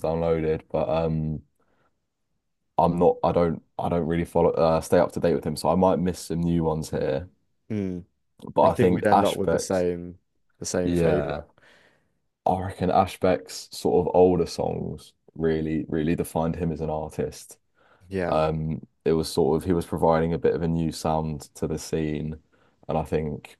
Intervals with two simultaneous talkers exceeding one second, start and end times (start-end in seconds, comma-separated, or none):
8.6-9.8